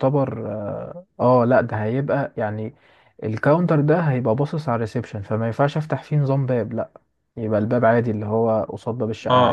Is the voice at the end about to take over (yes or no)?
yes